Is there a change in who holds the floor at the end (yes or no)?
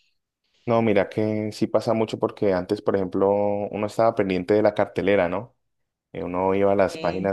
no